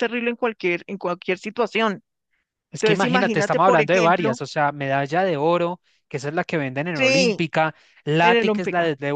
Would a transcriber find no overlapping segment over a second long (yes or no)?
no